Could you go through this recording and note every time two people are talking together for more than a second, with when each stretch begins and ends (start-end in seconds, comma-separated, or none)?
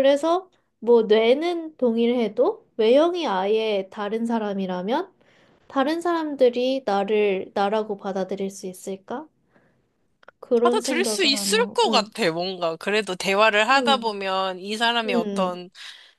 10.6-12.1